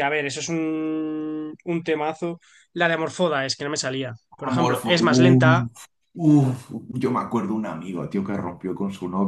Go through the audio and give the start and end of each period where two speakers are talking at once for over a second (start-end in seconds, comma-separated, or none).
4.5-5.7